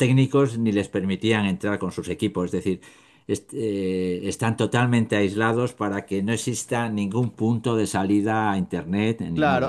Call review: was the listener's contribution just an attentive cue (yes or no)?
no